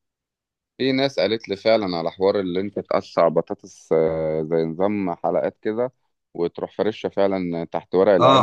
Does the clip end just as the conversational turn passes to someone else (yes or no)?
yes